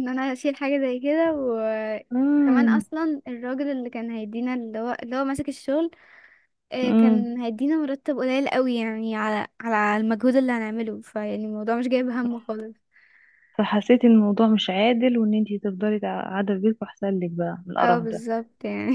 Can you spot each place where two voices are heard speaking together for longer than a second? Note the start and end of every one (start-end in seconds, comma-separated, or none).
none